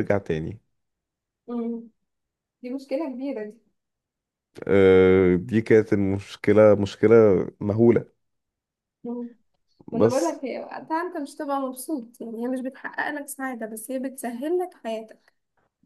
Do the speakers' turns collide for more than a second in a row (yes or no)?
no